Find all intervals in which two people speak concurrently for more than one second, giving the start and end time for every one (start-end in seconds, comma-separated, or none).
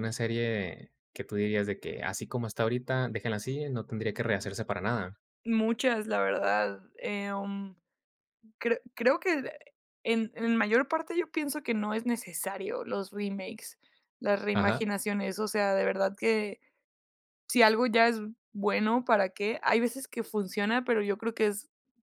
none